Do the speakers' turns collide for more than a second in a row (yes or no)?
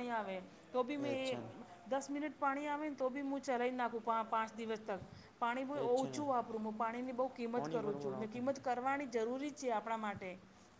yes